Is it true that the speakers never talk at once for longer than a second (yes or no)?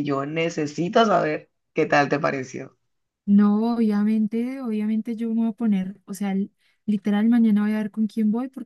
yes